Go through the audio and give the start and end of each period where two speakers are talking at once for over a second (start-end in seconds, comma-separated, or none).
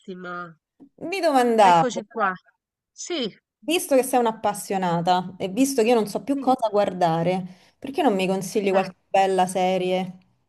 none